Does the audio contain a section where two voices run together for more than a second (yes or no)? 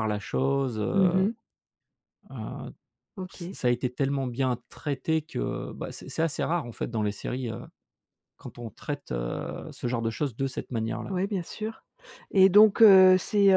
no